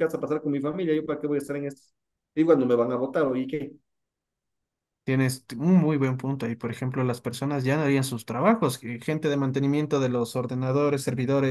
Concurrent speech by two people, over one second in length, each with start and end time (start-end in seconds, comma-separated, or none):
none